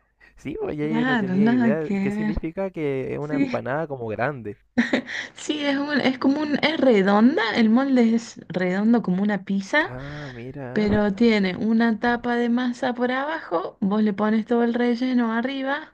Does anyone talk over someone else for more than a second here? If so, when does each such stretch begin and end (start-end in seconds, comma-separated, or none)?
0.8-2.4